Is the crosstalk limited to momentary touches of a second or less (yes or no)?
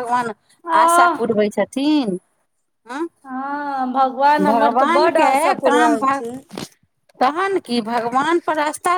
no